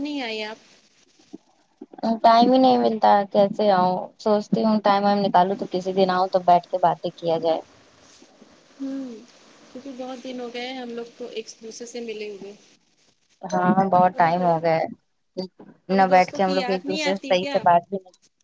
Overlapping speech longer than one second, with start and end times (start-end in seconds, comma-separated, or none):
16.0-17.6